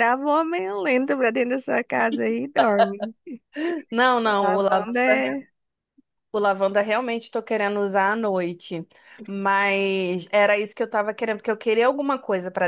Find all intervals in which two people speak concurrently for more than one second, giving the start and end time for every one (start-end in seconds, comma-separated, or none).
none